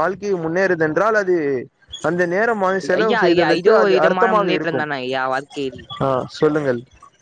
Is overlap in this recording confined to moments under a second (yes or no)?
no